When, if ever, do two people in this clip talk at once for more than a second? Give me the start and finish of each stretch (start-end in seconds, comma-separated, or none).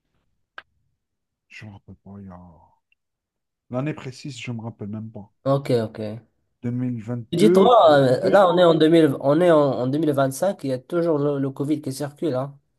7.3-8.7